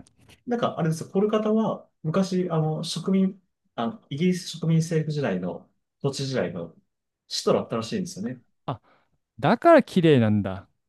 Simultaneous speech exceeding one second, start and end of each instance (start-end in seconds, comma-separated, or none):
none